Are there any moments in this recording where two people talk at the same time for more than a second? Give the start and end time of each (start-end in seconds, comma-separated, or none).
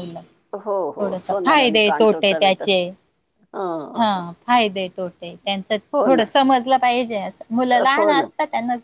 1.0-2.8